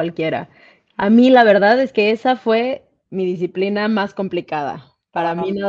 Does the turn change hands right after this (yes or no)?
no